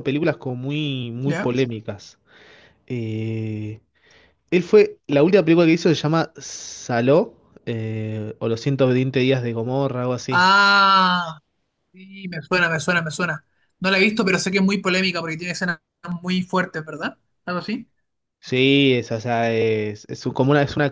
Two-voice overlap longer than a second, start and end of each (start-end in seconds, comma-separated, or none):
none